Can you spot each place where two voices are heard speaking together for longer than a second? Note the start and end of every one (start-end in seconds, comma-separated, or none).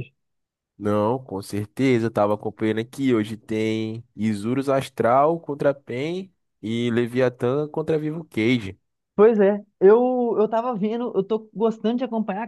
none